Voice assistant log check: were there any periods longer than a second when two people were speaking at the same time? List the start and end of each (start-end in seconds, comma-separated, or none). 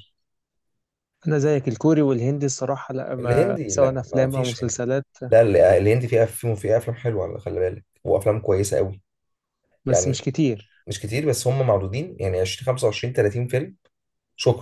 3.2-4.8